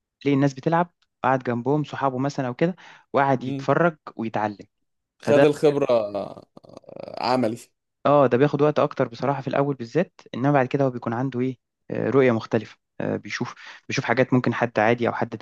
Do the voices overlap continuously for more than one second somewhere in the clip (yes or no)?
no